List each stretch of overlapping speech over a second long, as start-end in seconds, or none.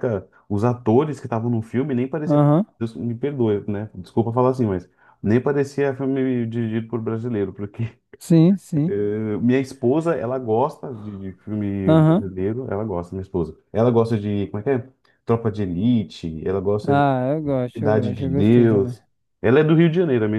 17.7-19.0